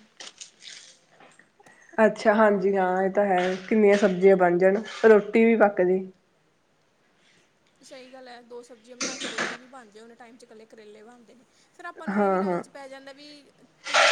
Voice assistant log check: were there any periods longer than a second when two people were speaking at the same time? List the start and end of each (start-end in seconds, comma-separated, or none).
none